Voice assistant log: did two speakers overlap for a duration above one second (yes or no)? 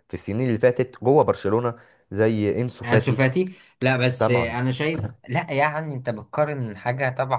no